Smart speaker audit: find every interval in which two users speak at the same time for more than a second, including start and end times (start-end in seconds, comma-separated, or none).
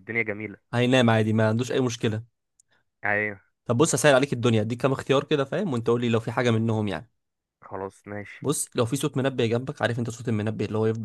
none